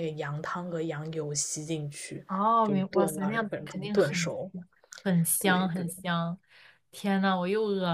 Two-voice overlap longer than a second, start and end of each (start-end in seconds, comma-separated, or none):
2.6-4.3